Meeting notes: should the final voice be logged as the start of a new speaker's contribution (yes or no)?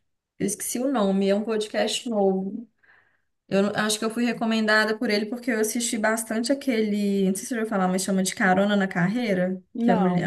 no